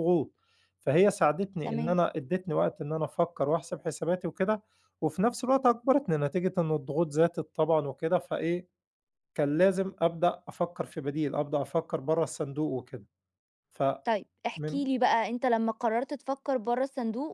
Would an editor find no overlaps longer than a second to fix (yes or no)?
yes